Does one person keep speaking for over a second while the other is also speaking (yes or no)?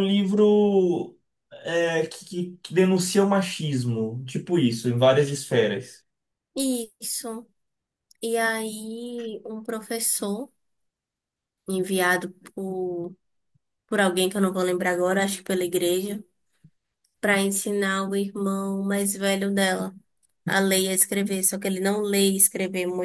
no